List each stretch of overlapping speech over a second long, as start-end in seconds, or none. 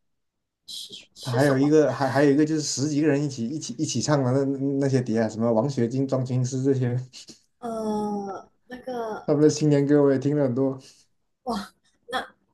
none